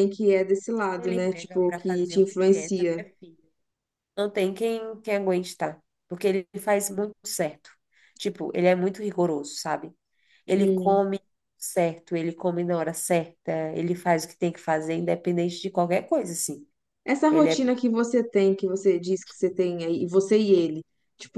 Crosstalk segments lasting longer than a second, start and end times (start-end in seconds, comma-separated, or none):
0.9-3.0